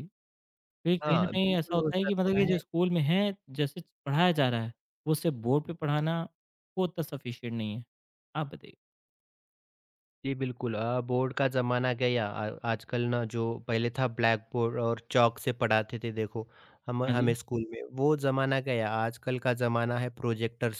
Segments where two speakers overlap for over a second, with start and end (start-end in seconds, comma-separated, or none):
1.0-2.5